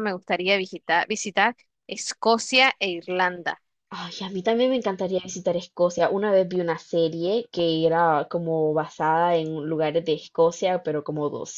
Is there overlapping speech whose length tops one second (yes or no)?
no